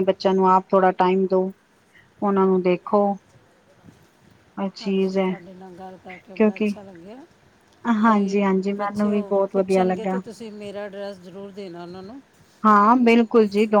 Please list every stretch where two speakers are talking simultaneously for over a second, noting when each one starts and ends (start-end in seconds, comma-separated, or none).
8.0-10.2